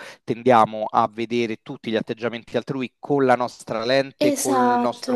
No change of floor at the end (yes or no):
yes